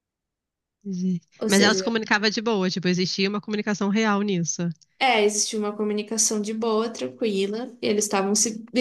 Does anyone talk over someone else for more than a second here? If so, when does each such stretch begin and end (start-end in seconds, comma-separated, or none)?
none